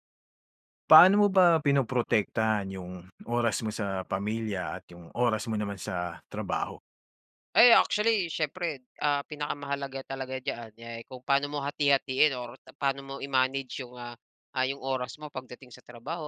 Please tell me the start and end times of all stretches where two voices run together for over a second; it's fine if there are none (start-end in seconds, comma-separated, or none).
none